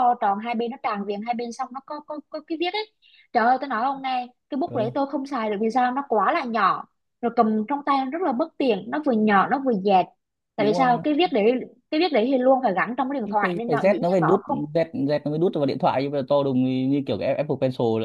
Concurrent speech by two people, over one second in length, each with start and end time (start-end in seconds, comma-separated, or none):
13.2-14.6